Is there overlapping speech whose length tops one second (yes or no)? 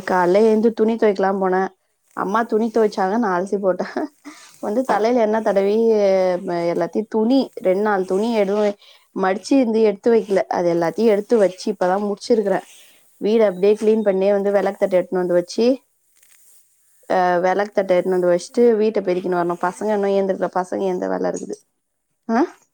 yes